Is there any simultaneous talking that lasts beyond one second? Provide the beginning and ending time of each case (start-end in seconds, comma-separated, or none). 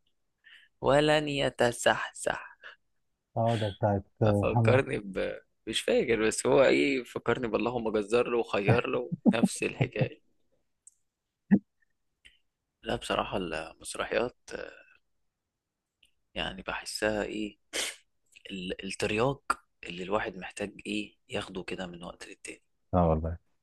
none